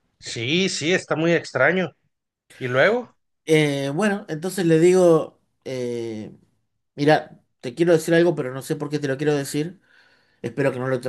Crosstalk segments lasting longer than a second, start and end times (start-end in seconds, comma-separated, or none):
none